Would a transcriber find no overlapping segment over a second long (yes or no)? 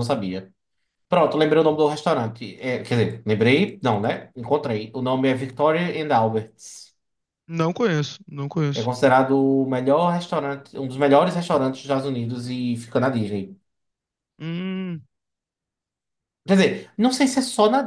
yes